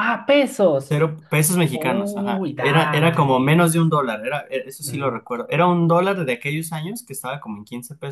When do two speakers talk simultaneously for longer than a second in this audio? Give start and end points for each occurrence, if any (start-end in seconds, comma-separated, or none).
1.7-3.7